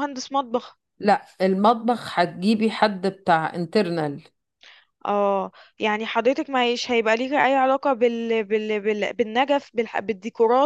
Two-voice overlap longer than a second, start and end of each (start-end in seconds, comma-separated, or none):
none